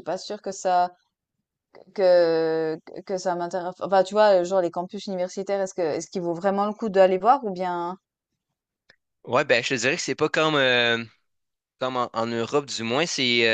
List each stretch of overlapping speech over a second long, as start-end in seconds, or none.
none